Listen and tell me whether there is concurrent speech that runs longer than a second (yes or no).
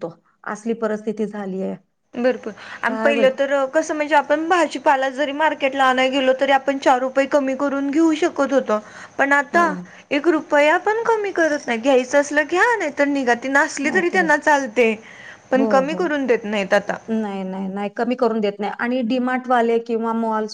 no